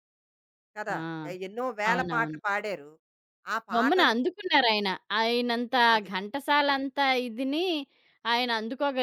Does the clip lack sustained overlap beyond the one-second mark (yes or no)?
yes